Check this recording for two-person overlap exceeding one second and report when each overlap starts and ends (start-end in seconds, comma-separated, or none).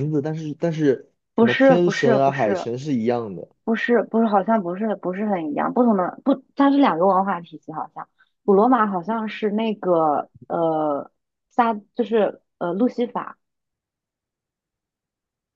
1.3-2.7